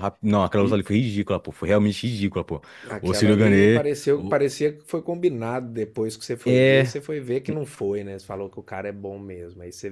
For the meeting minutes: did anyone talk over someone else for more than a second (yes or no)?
yes